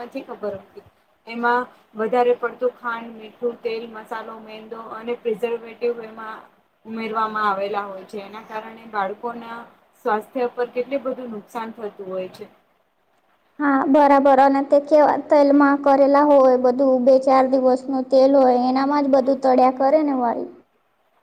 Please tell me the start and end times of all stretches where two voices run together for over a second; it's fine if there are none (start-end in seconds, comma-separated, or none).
none